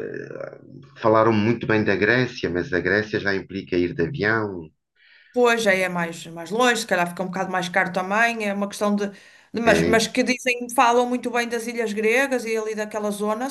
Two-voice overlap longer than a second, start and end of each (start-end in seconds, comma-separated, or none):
none